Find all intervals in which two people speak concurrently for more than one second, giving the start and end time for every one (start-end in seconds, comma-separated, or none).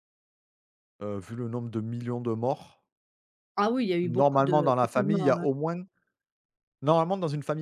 4.0-5.4